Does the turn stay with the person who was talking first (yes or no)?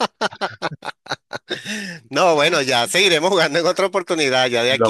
no